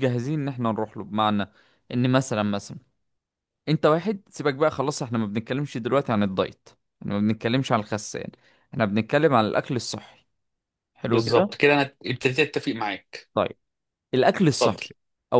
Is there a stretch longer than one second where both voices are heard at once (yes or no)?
no